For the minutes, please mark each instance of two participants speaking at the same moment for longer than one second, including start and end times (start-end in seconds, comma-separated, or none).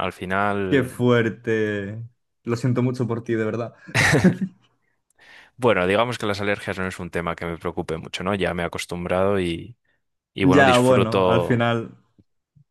10.4-11.7